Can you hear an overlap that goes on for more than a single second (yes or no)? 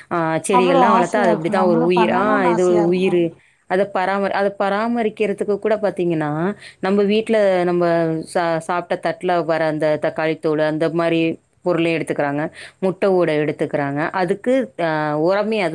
yes